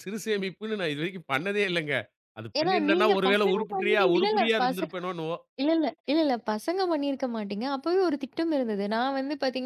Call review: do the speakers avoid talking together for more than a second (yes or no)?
no